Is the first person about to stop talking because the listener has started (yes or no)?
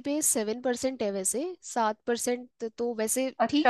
yes